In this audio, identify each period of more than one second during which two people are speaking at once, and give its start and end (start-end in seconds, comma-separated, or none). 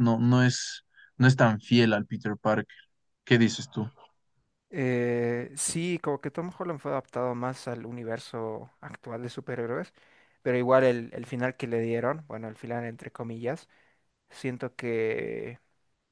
none